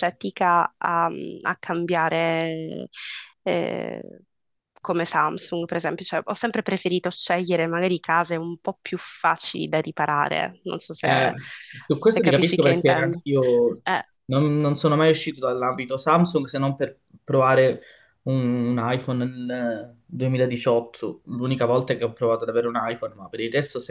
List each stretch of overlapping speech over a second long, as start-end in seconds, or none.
11.9-13.2